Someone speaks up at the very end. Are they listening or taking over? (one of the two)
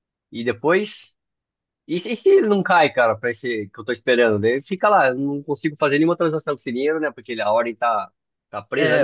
taking over